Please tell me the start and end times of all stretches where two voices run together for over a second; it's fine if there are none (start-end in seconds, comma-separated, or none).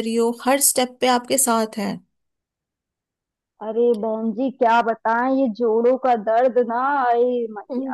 none